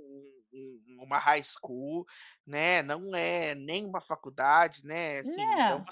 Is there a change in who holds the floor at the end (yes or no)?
no